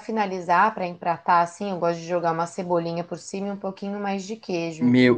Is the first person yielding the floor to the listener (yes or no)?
yes